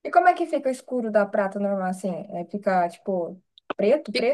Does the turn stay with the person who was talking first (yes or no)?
no